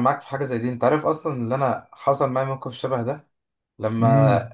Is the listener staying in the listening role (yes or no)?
yes